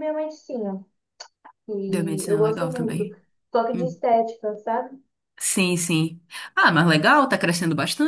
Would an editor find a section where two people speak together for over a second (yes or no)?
yes